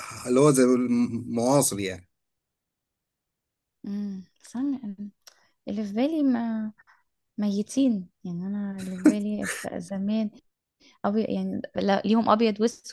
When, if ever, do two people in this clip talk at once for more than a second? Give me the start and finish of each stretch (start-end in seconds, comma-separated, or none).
none